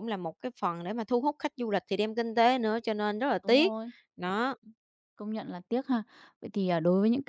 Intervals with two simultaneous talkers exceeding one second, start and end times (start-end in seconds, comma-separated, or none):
none